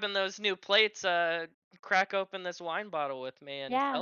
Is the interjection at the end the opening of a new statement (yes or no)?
yes